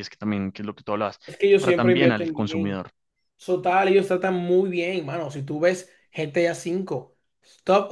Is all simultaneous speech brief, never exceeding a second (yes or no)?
no